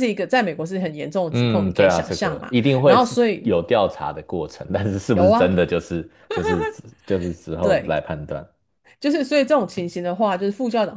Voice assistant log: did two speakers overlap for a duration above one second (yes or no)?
yes